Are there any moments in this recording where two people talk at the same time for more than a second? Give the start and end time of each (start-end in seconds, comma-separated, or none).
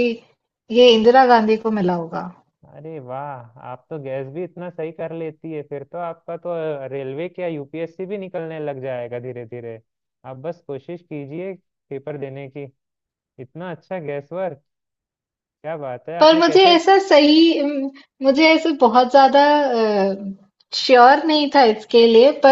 none